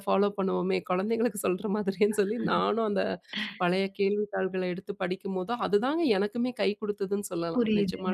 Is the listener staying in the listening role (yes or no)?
no